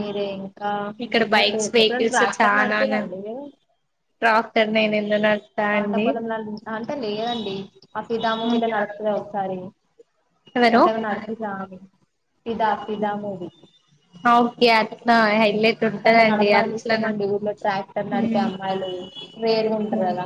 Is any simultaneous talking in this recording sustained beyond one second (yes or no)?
yes